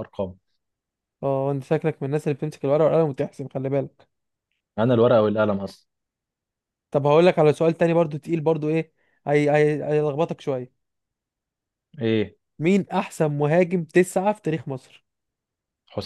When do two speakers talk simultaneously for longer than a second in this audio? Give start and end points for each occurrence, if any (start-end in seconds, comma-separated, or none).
none